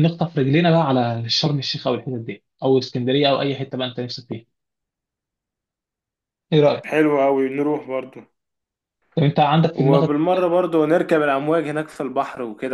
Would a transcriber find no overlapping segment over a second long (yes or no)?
yes